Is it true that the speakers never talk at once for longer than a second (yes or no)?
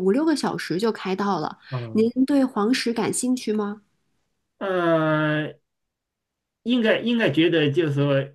yes